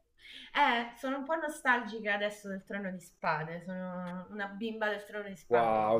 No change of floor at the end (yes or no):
no